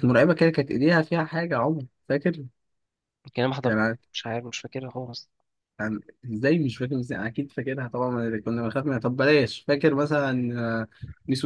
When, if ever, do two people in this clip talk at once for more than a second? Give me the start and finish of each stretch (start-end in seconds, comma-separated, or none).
none